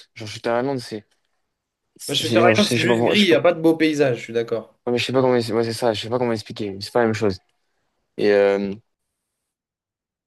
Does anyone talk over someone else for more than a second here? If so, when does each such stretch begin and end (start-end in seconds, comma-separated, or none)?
2.1-3.4